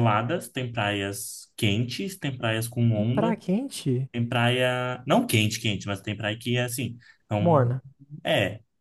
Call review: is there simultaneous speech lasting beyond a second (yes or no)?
no